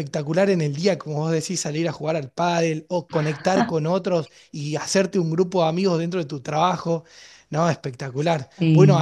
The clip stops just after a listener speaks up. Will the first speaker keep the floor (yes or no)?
yes